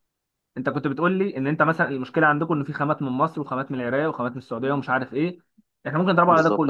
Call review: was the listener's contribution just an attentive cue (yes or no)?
yes